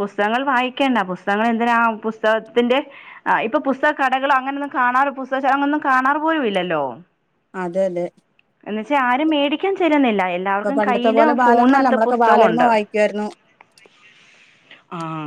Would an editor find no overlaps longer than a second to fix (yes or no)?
no